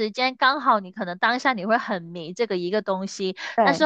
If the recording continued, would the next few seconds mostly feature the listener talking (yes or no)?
no